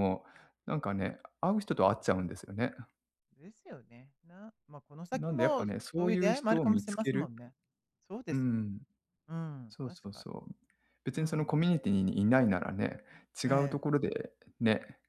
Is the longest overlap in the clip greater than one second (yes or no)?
yes